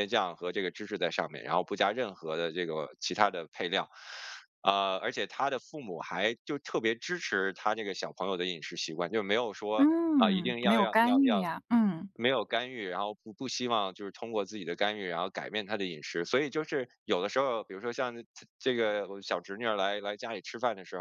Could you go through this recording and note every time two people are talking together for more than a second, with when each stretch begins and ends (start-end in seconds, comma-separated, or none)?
9.8-11.5